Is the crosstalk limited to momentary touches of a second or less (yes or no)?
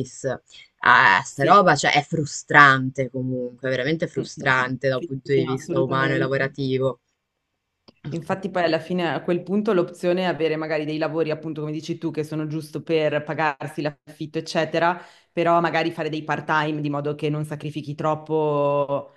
no